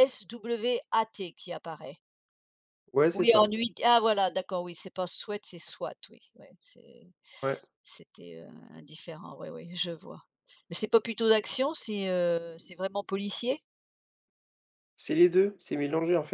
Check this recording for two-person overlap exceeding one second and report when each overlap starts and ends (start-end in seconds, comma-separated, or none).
none